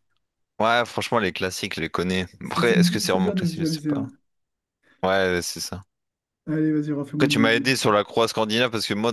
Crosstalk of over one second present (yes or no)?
yes